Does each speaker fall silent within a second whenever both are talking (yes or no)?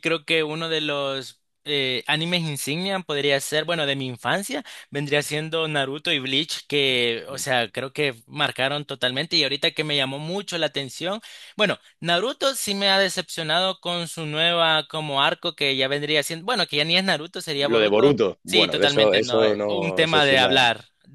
no